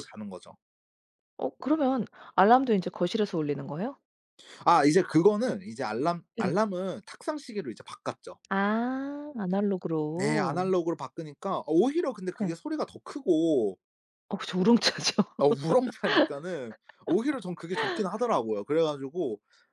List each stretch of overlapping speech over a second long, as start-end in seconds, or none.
none